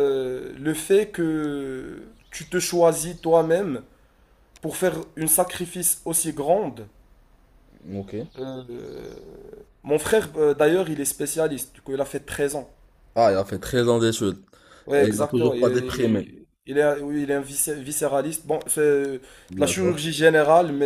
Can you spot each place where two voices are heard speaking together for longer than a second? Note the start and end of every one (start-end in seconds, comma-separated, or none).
15.0-16.3